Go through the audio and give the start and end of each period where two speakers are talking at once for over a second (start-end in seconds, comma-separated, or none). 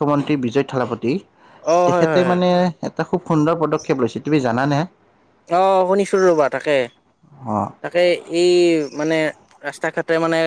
none